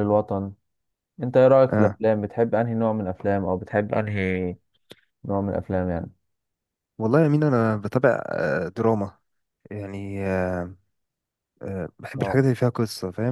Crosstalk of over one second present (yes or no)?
no